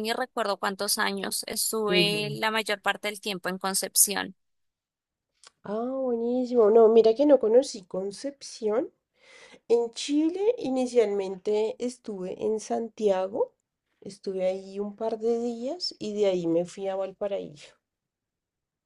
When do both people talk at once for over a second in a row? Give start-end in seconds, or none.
none